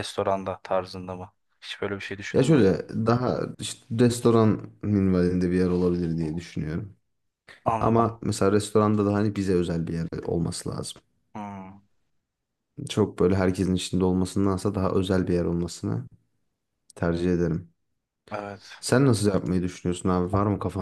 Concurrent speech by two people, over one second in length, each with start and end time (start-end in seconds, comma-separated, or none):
none